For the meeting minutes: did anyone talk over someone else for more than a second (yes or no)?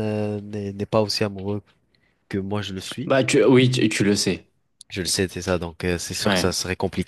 no